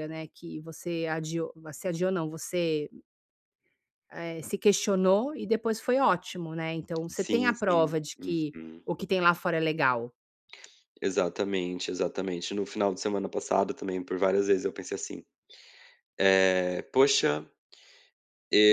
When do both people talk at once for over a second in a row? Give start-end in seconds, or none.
7.1-8.8